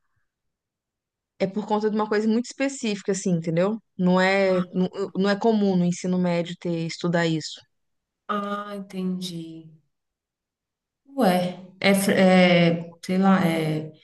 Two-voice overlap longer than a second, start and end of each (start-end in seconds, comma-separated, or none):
none